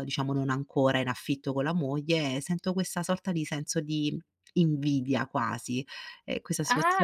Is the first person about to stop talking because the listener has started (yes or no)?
yes